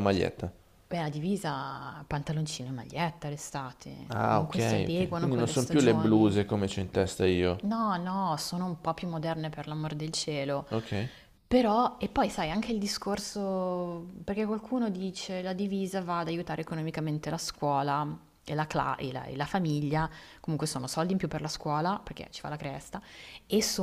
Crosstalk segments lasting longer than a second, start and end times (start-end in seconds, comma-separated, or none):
4.1-6.3